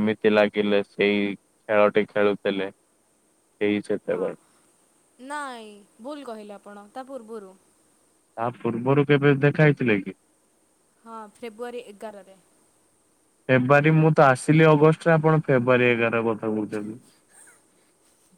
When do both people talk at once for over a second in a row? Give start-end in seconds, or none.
none